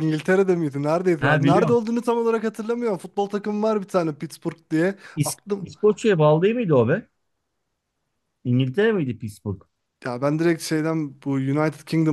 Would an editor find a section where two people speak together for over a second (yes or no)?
no